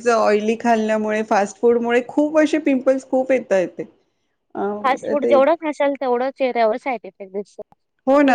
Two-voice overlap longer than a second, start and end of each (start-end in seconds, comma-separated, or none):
none